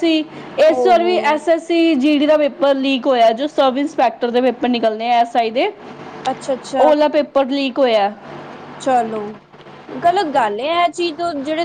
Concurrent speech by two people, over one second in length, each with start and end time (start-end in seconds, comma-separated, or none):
none